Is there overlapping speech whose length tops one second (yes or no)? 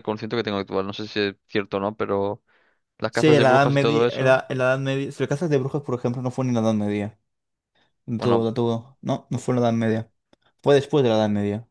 yes